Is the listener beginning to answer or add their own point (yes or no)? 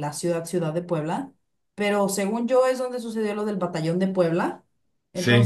no